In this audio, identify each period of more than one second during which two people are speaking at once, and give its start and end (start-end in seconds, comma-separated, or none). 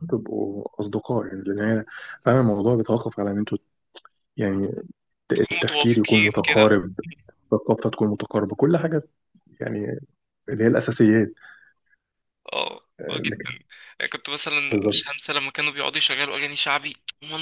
5.3-6.7